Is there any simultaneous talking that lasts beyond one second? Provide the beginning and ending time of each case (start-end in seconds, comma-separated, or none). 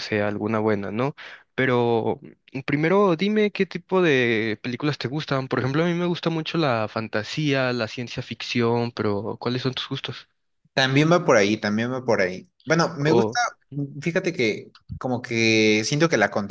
none